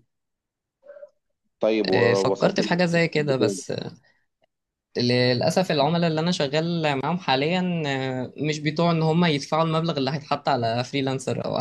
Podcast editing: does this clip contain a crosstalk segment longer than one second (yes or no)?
yes